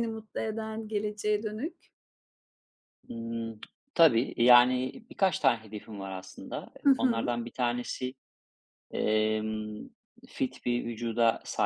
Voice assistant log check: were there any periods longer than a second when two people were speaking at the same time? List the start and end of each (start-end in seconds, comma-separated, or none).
none